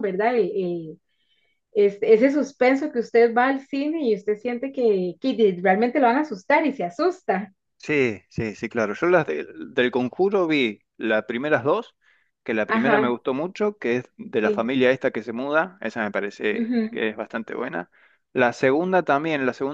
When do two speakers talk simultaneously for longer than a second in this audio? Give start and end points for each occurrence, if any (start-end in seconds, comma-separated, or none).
none